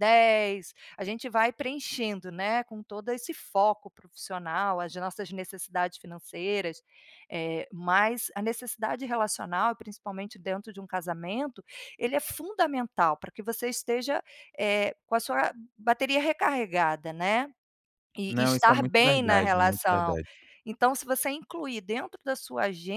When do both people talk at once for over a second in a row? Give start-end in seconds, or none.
18.3-20.2